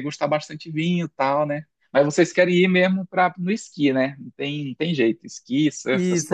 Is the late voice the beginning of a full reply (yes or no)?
yes